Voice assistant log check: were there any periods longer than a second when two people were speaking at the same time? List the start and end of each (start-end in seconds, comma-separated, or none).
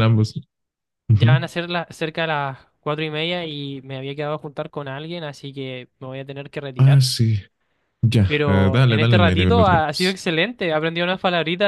8.2-10.2